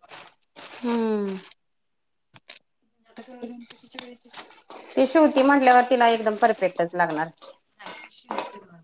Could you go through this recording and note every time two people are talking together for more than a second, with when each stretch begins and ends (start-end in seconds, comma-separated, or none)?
none